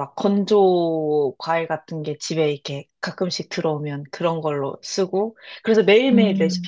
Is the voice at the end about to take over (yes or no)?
no